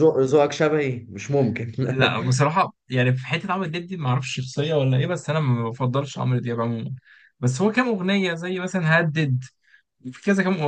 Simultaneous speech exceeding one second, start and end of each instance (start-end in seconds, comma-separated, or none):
none